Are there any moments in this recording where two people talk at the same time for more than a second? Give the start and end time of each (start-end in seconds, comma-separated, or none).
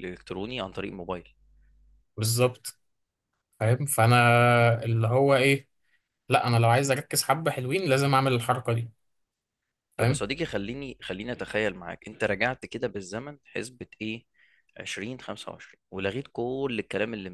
none